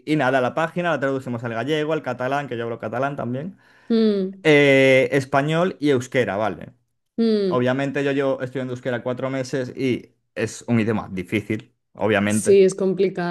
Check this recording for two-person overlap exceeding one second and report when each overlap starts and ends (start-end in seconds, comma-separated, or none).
none